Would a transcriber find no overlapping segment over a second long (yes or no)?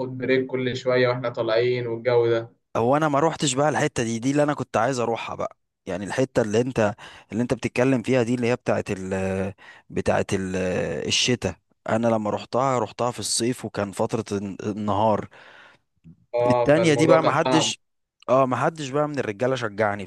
no